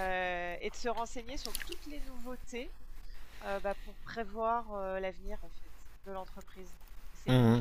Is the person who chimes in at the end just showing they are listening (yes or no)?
no